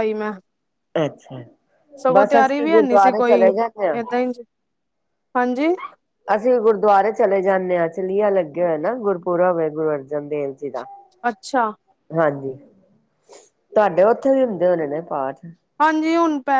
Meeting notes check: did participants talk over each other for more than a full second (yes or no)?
yes